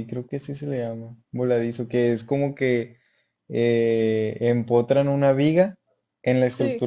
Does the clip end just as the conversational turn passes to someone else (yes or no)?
no